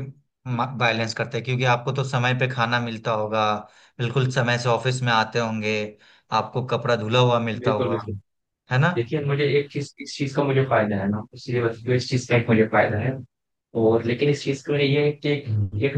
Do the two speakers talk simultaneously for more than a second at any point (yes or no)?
no